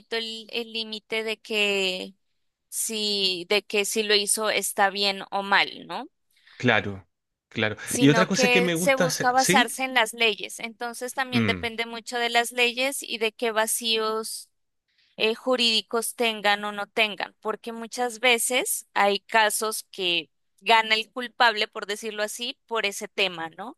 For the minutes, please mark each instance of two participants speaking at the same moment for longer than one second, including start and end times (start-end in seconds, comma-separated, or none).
7.8-9.7